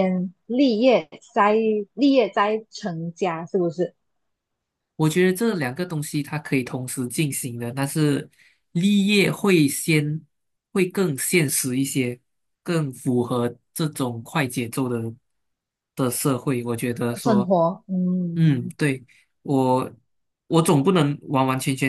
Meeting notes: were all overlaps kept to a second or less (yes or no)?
yes